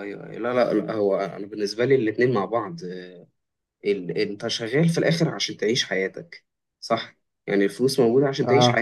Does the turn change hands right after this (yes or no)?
no